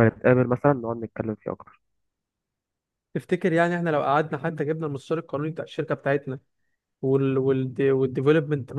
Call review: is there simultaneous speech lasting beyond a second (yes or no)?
no